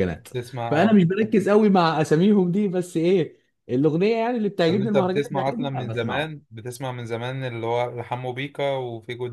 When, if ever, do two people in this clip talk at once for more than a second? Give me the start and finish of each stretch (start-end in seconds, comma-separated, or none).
4.7-6.4